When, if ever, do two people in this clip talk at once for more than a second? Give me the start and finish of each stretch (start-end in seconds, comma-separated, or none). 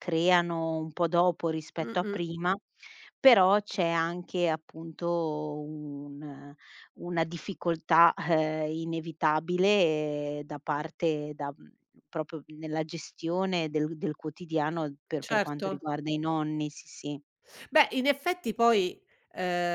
none